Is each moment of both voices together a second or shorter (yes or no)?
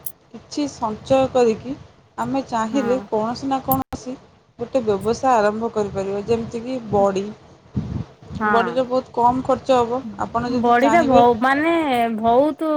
yes